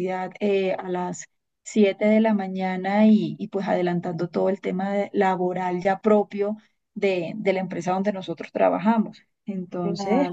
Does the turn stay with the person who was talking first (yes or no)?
no